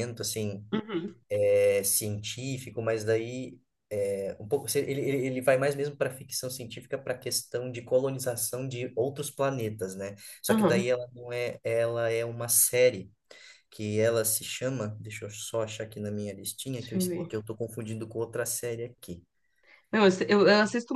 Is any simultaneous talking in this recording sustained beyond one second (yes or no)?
no